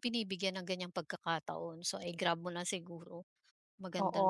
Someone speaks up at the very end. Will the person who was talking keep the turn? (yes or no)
no